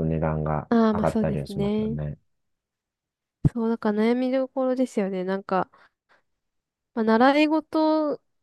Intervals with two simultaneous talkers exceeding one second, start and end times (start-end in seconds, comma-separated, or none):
0.7-2.0